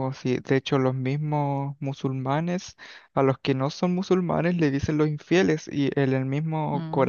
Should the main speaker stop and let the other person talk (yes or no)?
no